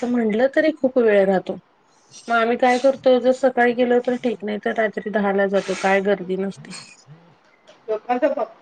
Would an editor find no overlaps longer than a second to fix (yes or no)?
yes